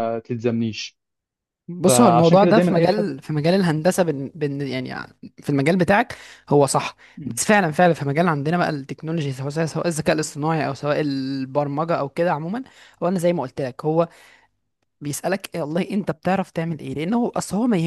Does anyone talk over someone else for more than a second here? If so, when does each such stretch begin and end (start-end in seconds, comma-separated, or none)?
1.9-3.1